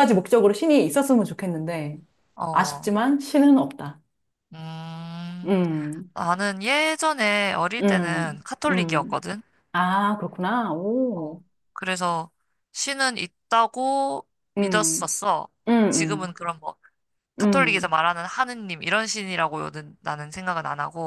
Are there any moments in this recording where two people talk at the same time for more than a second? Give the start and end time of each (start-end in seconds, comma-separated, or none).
7.8-9.3